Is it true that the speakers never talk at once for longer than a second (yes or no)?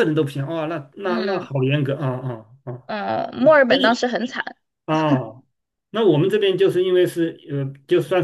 yes